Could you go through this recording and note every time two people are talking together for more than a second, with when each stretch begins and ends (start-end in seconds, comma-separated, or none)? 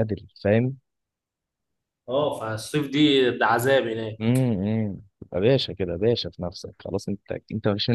none